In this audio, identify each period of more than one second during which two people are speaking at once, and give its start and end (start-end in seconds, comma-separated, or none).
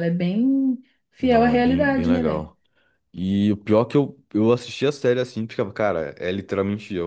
1.2-2.5